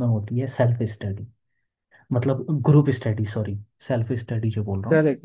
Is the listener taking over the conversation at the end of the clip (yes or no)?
yes